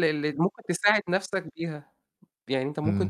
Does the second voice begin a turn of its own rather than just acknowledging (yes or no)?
no